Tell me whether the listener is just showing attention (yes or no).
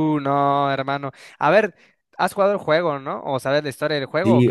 no